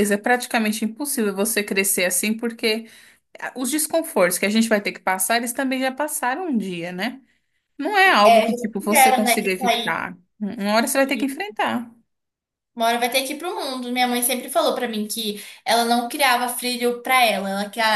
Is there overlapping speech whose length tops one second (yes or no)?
yes